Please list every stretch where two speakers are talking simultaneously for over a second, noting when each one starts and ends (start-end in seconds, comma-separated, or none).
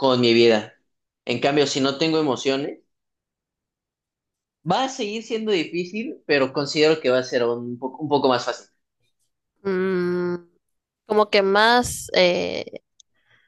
none